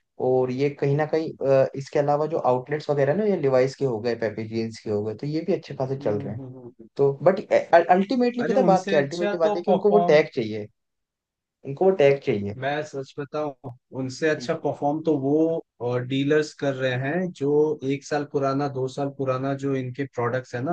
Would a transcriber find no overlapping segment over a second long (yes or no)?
no